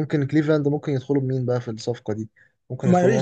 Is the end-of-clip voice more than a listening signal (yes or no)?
yes